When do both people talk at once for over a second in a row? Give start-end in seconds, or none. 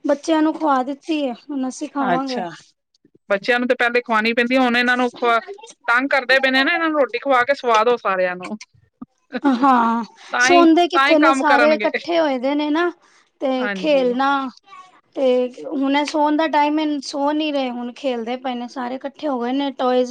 10.4-11.9